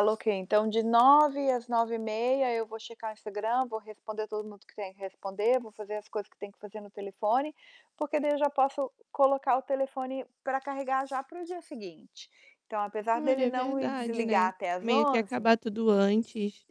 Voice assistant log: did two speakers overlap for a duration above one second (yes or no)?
yes